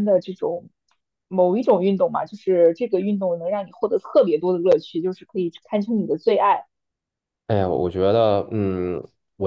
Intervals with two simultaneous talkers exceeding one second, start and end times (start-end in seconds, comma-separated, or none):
none